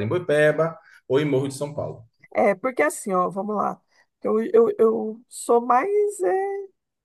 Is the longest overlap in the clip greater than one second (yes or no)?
no